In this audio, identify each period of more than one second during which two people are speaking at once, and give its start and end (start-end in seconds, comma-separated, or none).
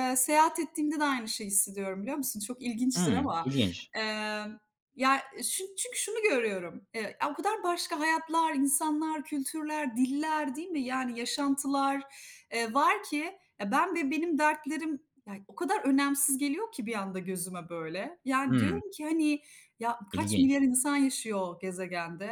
none